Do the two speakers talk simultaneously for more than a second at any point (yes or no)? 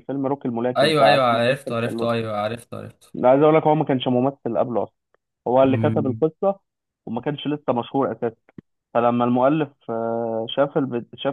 yes